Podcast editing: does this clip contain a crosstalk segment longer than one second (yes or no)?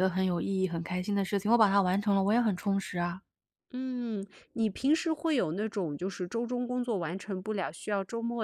no